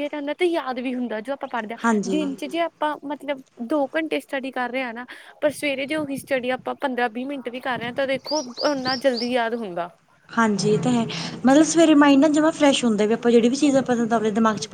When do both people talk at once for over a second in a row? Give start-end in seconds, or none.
none